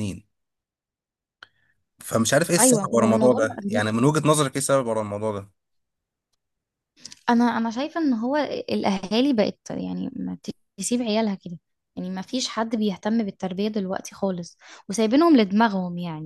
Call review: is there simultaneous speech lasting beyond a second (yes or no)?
yes